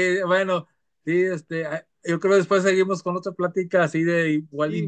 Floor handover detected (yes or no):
yes